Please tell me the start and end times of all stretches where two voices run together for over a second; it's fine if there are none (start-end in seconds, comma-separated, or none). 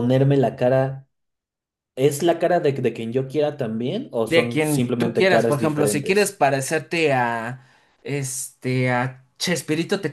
4.2-6.4